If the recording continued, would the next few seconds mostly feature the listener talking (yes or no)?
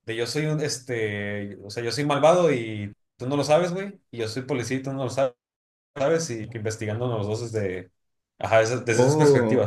no